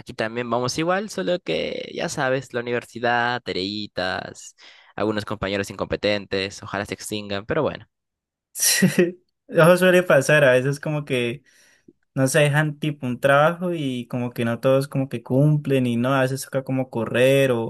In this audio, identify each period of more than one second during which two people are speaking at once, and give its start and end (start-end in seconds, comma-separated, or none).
none